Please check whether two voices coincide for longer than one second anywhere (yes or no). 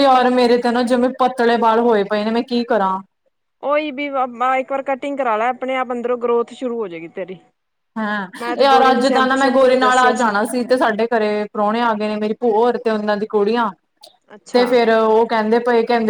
yes